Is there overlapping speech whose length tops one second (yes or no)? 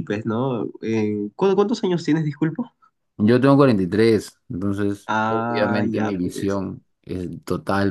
yes